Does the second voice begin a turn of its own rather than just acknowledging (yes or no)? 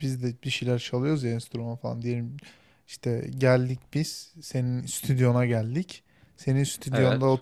no